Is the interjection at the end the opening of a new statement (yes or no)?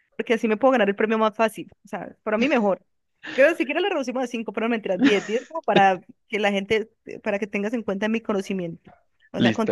yes